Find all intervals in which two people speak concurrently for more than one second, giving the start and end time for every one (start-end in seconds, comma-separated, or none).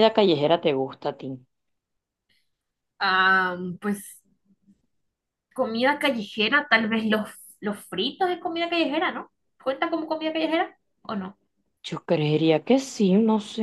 none